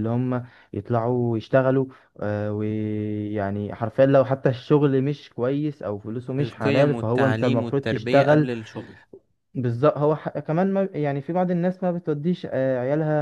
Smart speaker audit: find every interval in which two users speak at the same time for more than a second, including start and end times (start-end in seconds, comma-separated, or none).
6.4-8.5